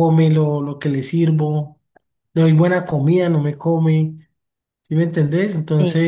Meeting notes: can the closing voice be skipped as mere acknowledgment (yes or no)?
yes